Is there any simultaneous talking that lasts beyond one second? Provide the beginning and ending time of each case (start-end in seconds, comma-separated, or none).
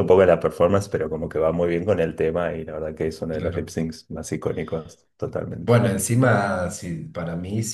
none